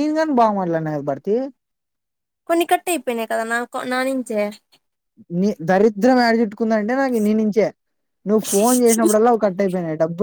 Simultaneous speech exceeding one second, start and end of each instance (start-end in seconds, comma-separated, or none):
none